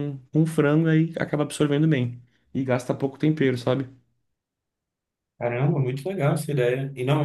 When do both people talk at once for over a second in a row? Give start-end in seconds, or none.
none